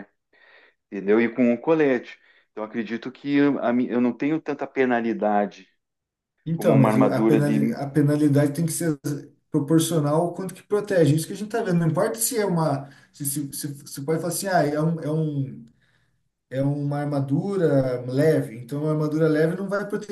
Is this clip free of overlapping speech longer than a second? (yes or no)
no